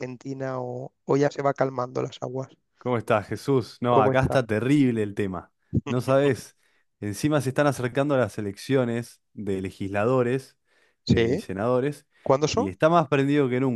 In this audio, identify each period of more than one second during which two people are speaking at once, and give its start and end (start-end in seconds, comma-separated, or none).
none